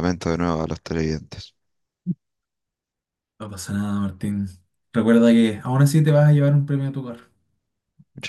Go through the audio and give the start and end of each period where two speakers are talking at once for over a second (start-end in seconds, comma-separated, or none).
none